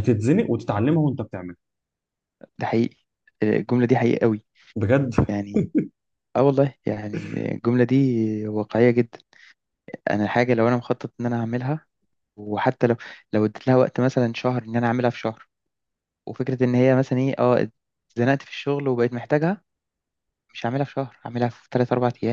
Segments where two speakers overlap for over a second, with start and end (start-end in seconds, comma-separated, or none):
none